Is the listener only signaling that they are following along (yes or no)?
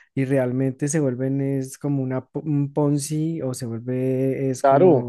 no